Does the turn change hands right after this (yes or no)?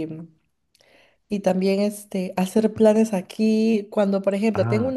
no